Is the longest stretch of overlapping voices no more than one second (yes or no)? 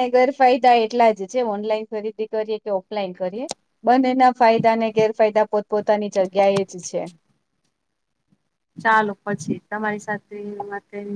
yes